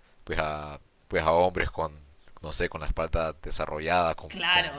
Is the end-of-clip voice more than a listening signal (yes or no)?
no